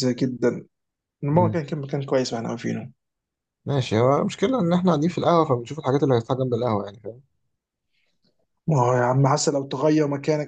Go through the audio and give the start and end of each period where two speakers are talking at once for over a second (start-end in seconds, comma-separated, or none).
none